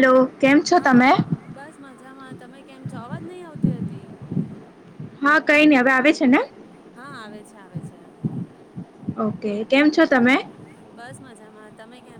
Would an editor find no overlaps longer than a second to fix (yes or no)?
yes